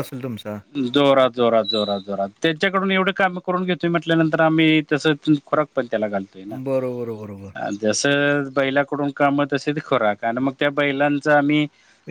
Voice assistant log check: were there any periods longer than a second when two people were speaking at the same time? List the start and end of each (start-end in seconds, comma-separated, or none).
none